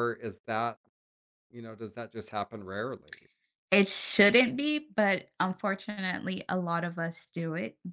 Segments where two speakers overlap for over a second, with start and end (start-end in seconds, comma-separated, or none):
none